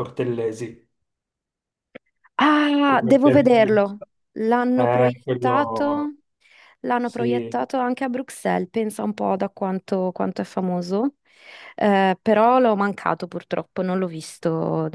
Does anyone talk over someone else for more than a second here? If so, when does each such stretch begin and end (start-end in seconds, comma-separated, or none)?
4.8-6.1